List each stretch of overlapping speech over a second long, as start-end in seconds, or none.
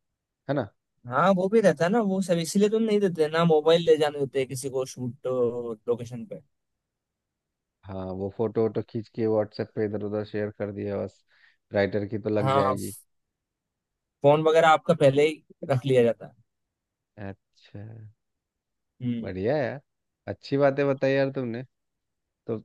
none